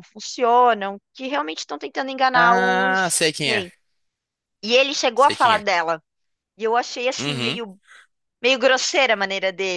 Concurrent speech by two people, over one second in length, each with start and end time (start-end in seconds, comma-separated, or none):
2.3-3.7